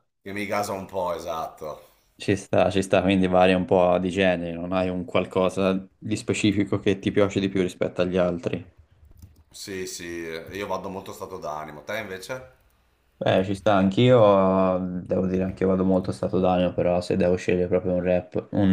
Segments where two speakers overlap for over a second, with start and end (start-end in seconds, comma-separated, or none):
none